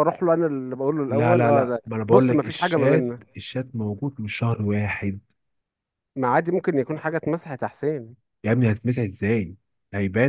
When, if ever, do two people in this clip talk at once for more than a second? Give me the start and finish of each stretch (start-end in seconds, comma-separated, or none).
1.1-3.4